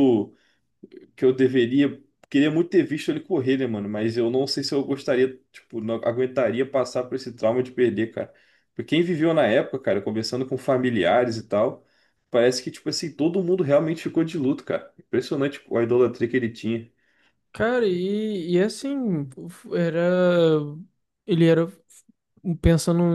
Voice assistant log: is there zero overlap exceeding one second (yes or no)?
yes